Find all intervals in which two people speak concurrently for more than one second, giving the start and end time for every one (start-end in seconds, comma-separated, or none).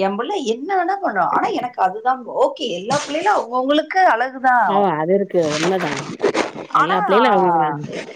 none